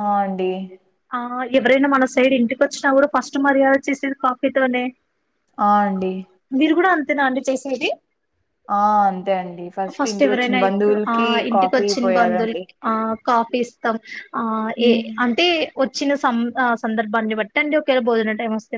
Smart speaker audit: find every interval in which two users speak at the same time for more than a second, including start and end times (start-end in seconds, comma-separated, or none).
10.3-12.6